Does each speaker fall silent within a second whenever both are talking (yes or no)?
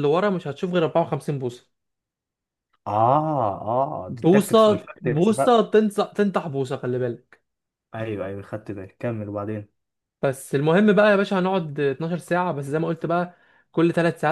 no